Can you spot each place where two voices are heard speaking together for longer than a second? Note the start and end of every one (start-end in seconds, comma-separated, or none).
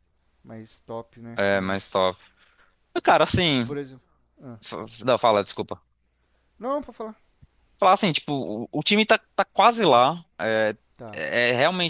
none